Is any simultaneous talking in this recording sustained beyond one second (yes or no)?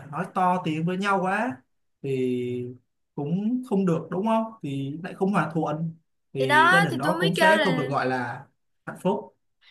yes